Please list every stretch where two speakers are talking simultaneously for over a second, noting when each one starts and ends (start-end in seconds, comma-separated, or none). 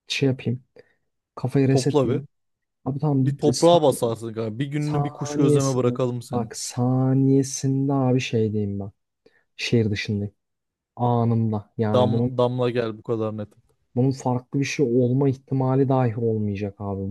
4.8-6.6